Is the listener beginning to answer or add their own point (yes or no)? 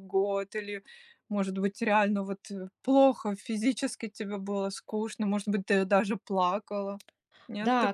yes